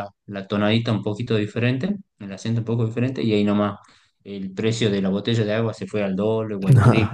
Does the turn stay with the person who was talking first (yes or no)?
yes